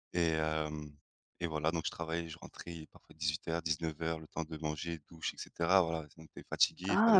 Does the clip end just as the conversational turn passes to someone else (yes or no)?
yes